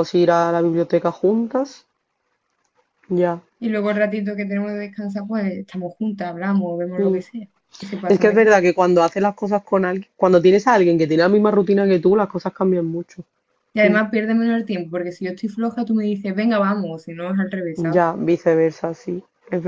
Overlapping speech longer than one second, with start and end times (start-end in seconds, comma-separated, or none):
none